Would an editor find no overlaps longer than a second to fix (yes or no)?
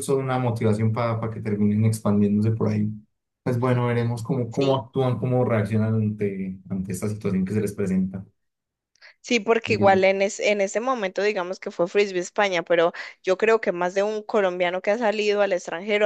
yes